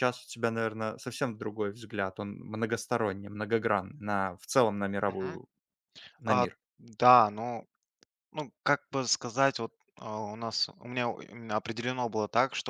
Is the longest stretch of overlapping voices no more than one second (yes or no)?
yes